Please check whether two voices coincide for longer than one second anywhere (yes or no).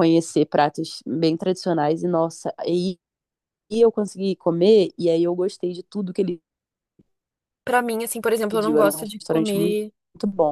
yes